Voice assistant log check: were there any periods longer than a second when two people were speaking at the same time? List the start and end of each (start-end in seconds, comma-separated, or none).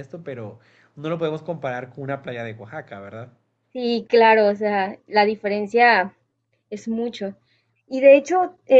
none